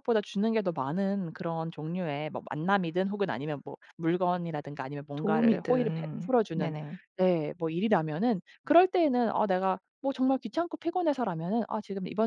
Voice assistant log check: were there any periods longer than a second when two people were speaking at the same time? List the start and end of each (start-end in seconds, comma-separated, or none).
5.2-6.7